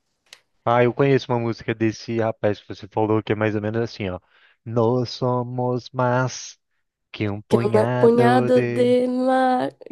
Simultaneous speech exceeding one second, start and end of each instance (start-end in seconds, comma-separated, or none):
7.5-9.0